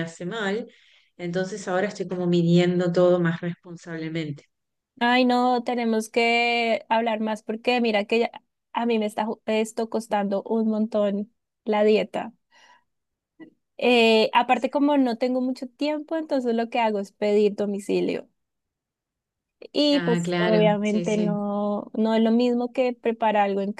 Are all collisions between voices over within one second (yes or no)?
no